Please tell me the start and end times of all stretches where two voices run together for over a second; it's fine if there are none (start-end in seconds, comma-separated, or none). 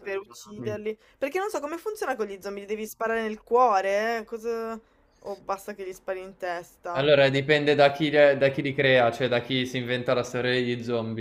none